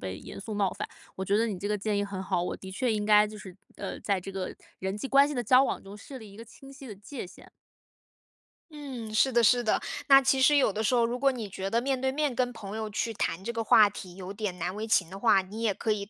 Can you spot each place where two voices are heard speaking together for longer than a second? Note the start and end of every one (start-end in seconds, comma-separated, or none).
none